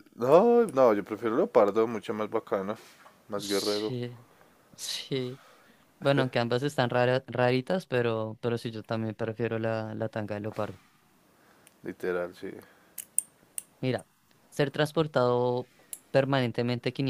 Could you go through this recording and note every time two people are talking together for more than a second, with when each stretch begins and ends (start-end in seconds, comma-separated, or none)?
none